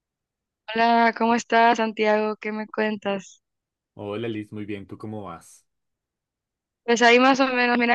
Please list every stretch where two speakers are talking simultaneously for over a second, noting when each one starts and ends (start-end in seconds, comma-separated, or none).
none